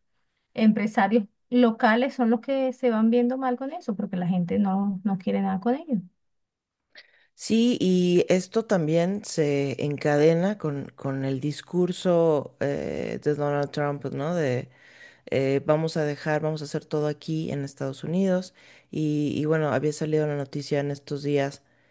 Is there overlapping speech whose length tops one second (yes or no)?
no